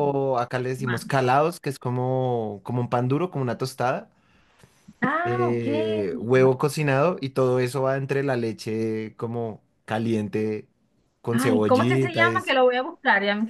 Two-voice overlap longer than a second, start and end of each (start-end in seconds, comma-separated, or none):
11.3-12.6